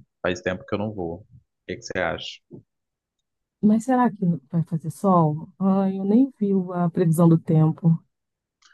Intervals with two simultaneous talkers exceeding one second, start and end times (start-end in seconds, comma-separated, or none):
none